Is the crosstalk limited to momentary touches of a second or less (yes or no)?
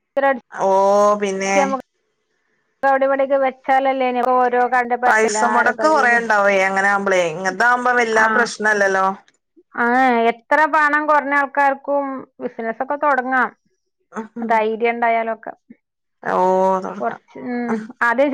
yes